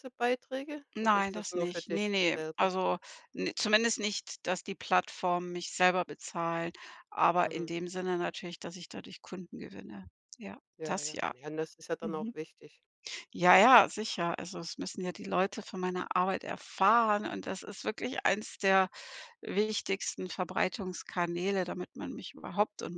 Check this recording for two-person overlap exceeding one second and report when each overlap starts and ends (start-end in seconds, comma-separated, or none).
0.9-2.7